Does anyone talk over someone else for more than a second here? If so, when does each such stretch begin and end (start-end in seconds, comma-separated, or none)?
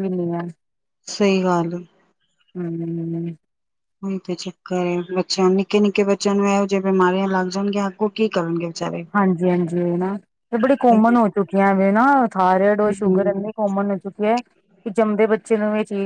none